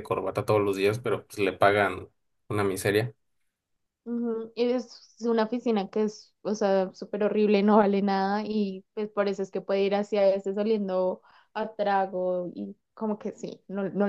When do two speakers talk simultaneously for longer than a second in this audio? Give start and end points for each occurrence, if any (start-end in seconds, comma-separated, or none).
none